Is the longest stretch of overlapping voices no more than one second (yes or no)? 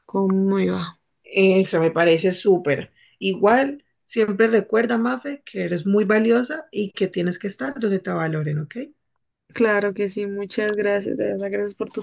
yes